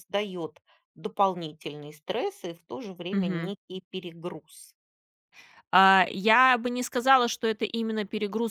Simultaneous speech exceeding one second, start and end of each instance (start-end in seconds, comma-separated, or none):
none